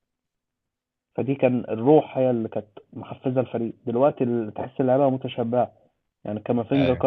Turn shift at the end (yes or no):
no